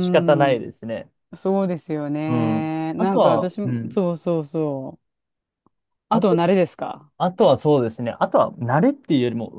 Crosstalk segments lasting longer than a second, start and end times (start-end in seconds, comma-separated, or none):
2.3-4.0